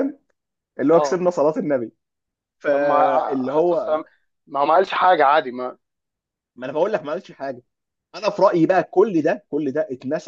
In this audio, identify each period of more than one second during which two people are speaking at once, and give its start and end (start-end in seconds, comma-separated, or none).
2.7-4.0